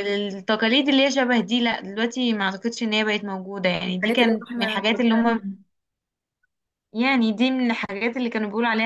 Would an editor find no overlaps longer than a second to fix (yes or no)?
no